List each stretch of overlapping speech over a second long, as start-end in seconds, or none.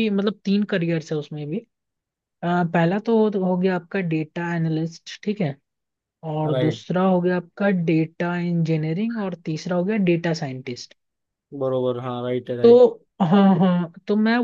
none